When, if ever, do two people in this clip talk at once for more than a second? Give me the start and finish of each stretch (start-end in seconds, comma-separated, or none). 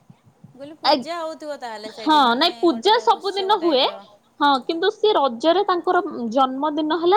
1.9-3.8